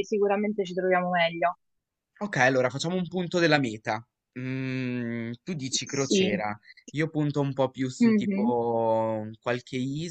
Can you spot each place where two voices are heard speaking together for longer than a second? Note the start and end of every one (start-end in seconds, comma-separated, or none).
none